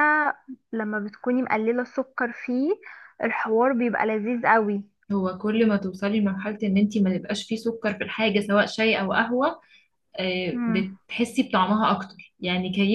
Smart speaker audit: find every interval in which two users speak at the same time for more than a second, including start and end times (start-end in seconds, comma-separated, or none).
none